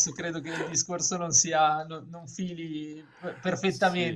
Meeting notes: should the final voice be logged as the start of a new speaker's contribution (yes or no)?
yes